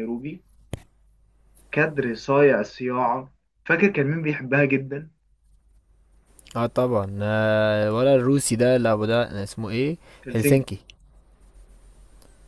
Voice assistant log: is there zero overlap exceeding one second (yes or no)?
yes